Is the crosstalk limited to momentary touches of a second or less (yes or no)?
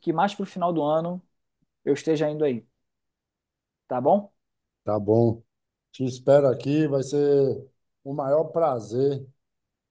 yes